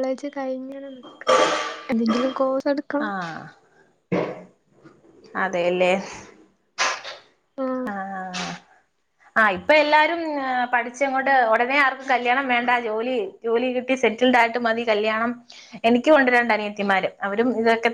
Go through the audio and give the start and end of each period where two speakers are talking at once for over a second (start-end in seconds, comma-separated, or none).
none